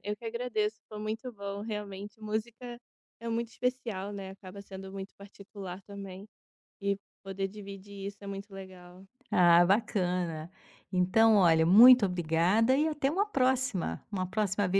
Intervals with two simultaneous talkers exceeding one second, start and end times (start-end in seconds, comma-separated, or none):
none